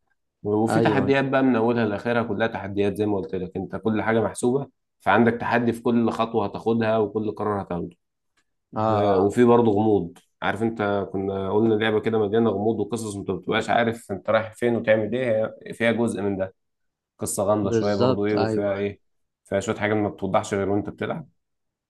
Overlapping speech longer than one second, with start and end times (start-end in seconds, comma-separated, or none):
17.6-18.9